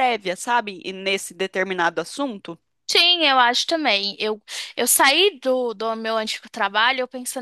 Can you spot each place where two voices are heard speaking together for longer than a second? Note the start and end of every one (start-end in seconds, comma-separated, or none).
none